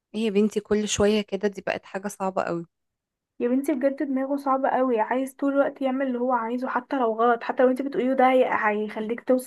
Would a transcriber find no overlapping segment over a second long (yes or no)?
yes